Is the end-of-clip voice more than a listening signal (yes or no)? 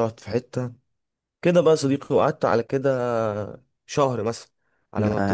no